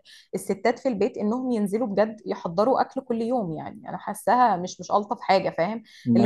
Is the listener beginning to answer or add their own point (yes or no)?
no